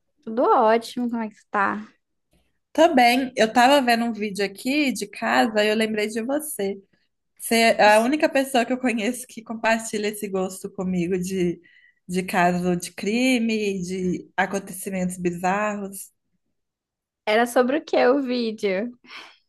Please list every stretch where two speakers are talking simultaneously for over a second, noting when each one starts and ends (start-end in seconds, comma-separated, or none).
none